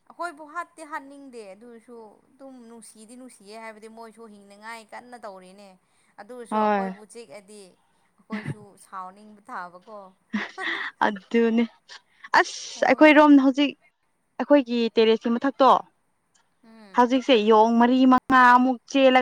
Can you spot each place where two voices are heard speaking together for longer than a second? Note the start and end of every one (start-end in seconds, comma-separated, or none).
none